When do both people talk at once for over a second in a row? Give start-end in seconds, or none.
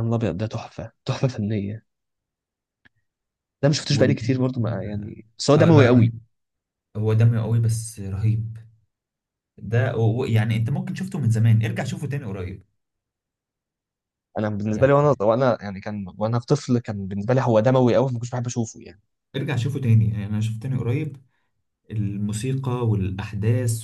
none